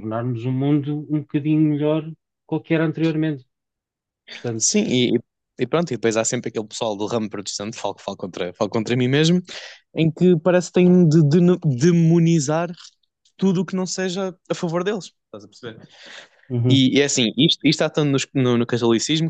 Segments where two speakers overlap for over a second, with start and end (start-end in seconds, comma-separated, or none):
none